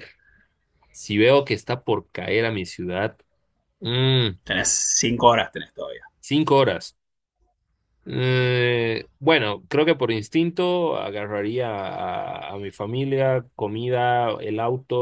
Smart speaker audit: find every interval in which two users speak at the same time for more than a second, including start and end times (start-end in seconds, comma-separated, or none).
none